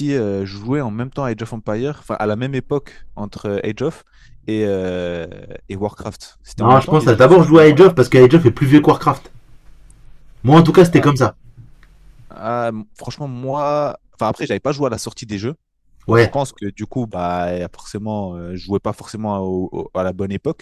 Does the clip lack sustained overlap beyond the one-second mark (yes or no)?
no